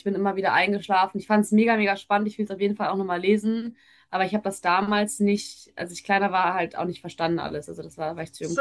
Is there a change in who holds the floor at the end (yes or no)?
yes